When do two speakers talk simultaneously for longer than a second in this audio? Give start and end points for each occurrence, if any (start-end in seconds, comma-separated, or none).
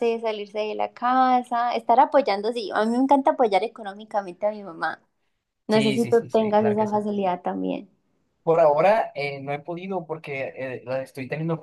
5.7-7.0